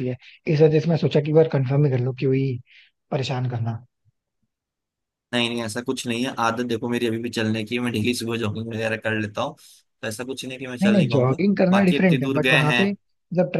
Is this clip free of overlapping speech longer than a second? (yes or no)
no